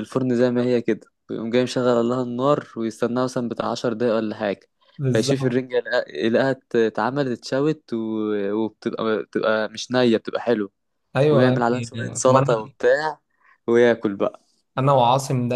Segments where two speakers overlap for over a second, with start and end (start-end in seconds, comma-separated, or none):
11.3-12.7